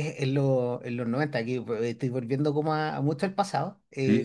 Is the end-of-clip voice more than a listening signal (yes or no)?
no